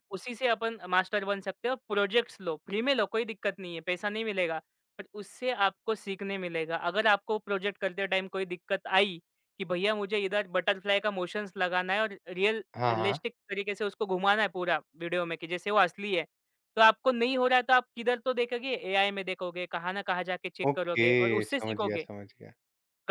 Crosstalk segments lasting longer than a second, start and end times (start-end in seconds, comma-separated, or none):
20.7-22.1